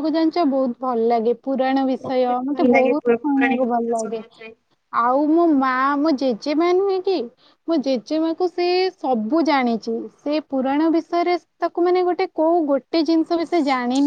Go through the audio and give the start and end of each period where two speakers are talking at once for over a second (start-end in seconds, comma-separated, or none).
2.1-4.2